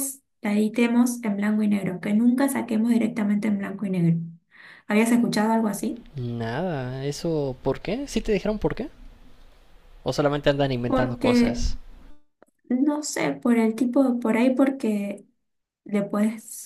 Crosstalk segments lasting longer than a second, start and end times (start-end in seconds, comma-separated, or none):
none